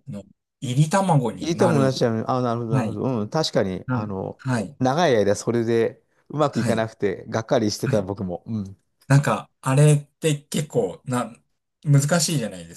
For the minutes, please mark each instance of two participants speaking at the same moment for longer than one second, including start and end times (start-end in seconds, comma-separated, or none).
none